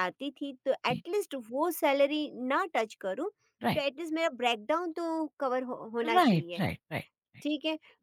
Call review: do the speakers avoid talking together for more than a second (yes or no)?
yes